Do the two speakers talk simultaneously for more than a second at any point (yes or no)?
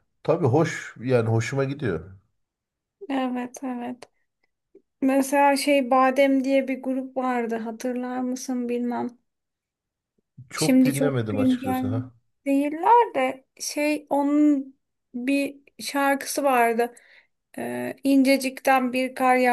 yes